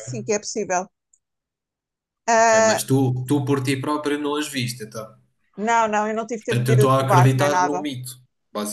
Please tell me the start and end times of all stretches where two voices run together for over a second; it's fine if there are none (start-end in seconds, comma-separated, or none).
6.4-7.8